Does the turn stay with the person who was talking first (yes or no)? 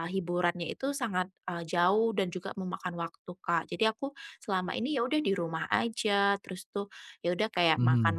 yes